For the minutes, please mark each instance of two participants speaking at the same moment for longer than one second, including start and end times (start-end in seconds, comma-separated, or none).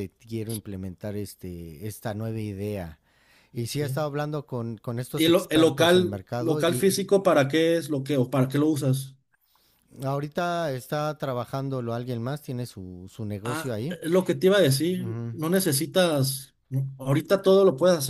5.1-7.0